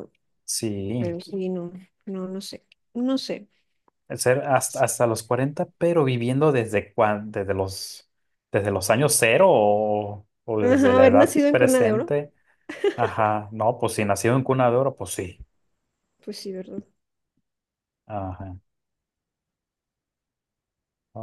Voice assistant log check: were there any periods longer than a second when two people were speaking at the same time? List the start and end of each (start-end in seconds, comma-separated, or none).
10.6-12.1